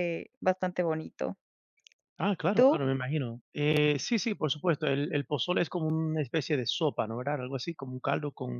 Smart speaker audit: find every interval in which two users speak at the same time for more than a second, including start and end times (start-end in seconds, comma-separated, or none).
none